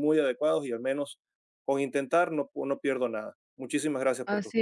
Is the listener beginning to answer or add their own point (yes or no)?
yes